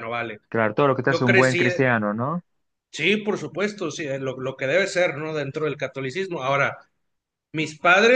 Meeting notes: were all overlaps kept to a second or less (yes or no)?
yes